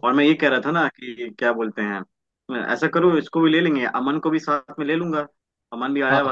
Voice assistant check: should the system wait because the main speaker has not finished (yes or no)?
no